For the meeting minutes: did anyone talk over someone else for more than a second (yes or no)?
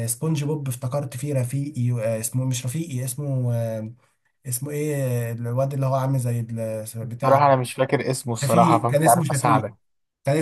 yes